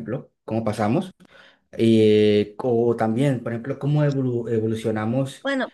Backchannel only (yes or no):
yes